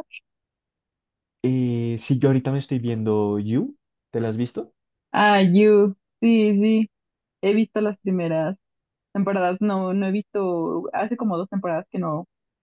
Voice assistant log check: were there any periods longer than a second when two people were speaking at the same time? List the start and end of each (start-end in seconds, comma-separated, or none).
none